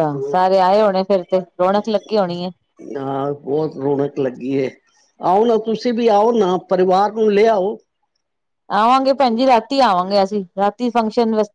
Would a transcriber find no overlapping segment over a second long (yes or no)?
yes